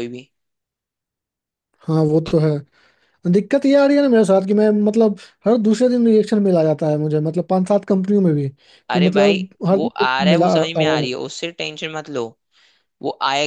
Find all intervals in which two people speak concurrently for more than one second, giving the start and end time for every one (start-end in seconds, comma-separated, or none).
8.9-11.1